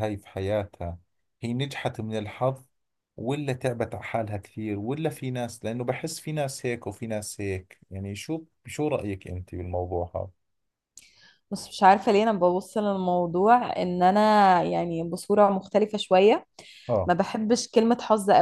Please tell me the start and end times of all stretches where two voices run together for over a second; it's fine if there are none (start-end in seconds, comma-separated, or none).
none